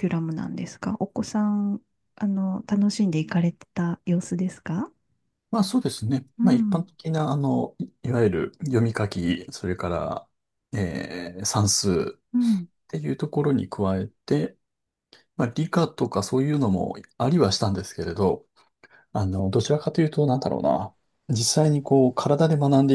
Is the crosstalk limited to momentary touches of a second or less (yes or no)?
yes